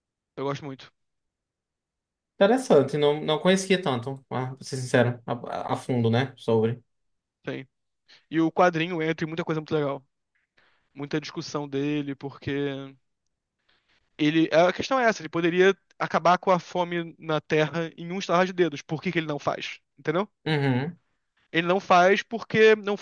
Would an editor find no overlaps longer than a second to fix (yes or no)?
yes